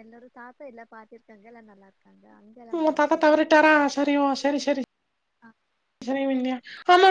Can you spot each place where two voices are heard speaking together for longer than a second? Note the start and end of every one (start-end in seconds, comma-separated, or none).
none